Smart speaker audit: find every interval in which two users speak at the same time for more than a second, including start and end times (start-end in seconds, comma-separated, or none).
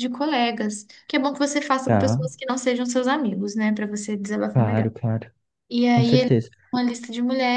none